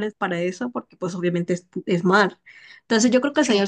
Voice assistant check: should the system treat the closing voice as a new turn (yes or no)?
no